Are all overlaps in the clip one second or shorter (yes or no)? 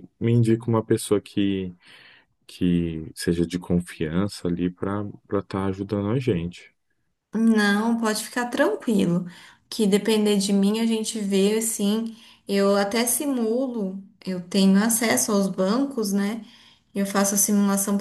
yes